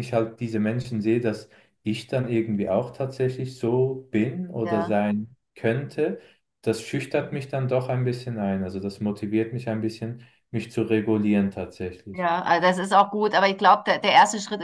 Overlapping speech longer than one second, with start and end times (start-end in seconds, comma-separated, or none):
none